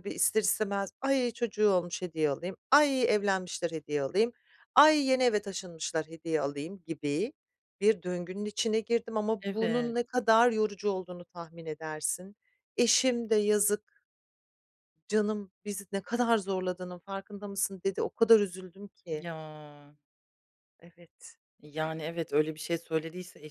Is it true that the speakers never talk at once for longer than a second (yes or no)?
yes